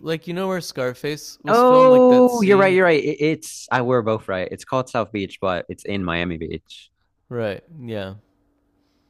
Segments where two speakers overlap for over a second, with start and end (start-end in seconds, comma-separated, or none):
1.5-2.8